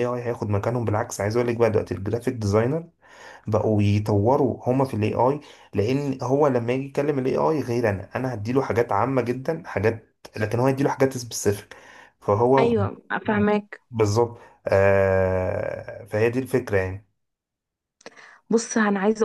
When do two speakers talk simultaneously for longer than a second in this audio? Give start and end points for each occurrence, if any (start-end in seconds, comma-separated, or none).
none